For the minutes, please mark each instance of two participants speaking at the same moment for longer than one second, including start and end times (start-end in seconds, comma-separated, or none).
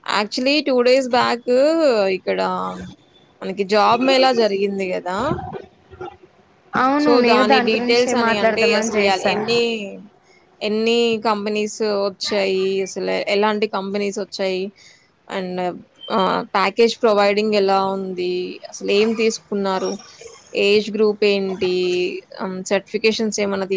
7.0-9.3